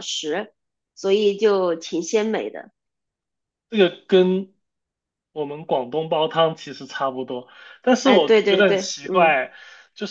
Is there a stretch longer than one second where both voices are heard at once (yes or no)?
yes